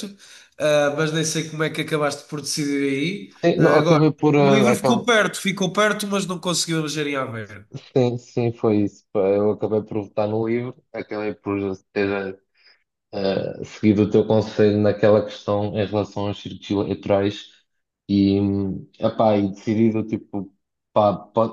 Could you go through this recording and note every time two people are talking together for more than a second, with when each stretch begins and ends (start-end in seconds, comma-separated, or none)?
3.4-5.1